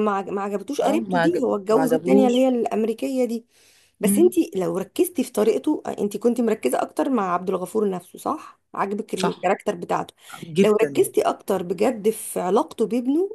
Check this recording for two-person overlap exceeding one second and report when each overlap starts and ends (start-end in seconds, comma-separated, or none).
0.8-2.5